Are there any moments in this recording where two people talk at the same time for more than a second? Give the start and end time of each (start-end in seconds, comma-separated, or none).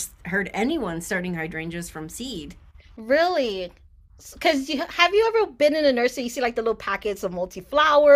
none